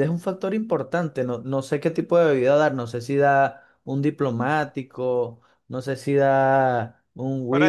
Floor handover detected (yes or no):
yes